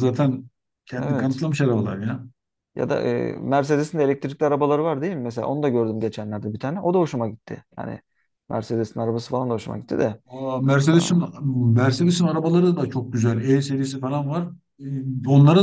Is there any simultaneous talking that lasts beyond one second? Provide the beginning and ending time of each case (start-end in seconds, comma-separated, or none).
none